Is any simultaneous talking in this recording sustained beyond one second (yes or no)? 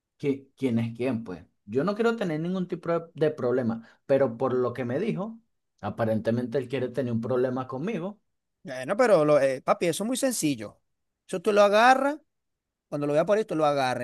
no